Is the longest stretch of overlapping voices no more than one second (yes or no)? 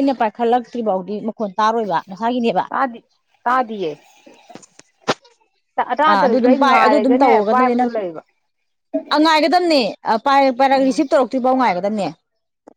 no